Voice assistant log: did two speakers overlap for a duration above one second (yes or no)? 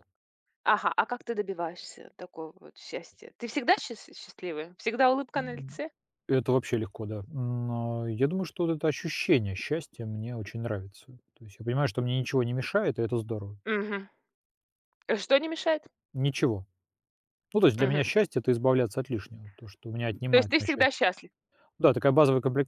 no